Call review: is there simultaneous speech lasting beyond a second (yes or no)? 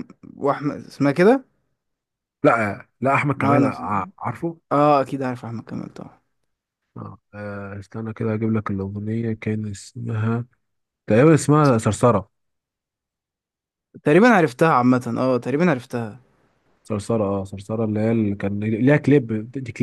no